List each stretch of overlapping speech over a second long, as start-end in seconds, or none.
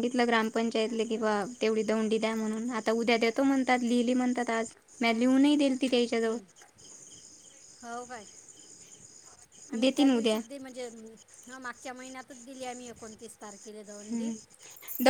none